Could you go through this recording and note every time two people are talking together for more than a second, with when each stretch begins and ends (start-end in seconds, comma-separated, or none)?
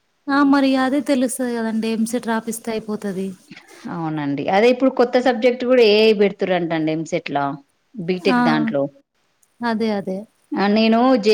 none